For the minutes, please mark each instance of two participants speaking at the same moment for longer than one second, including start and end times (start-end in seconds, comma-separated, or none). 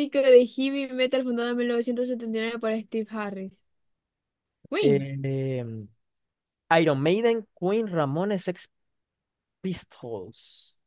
none